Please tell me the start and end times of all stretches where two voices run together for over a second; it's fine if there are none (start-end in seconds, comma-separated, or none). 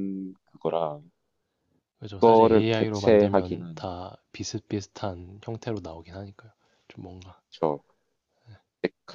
2.2-3.9